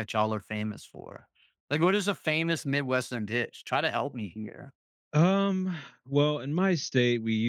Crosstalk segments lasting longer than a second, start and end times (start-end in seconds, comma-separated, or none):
none